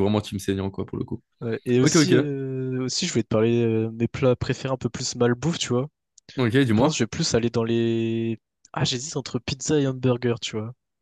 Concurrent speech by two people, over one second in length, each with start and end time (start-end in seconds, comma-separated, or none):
none